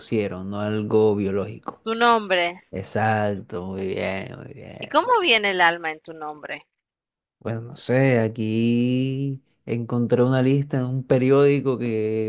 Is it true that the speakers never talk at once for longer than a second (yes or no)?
yes